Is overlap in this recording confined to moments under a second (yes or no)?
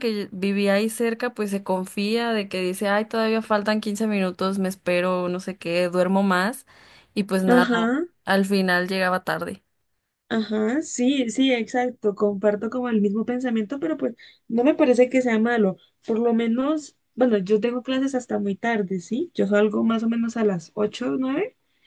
yes